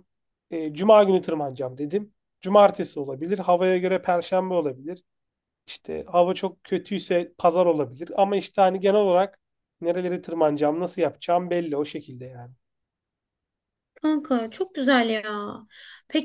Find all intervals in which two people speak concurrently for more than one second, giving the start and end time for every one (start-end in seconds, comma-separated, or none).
none